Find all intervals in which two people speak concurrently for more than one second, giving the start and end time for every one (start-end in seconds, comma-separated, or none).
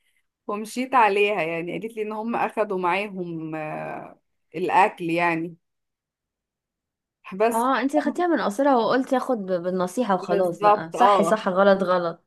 10.2-11.4